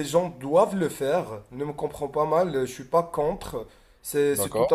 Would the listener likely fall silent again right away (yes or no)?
yes